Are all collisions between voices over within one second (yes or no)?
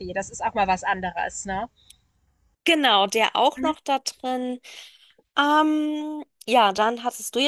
yes